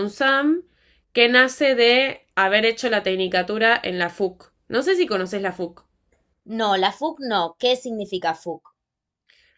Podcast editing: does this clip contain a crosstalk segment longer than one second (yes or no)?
no